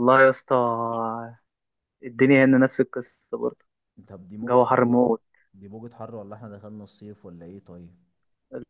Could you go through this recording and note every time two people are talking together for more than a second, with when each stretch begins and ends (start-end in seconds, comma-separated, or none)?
none